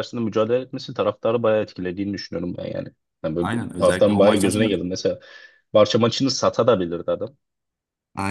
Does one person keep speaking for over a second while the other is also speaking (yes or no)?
yes